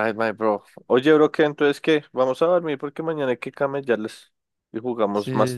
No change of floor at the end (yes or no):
no